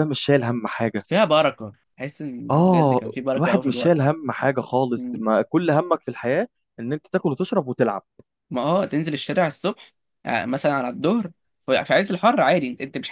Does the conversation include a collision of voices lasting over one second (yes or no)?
yes